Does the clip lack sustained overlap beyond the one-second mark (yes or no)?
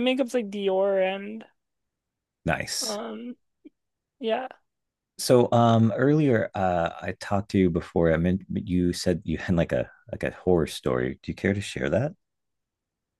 yes